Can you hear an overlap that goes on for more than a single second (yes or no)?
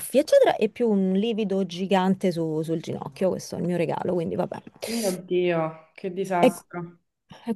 no